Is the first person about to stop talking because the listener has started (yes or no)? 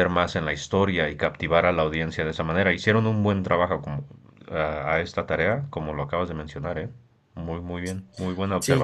yes